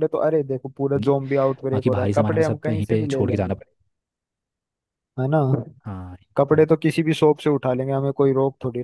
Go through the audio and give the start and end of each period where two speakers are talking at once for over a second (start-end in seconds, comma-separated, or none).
1.7-3.6